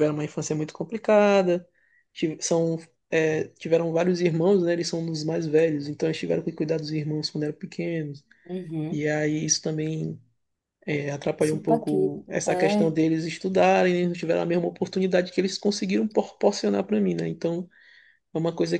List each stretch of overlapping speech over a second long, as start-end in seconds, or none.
11.4-13.0